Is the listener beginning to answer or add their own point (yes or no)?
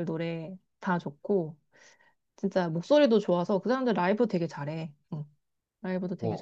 yes